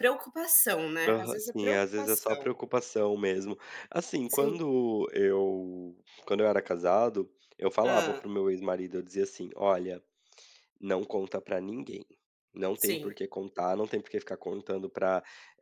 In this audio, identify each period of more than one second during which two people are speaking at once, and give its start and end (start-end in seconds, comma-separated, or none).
1.1-2.5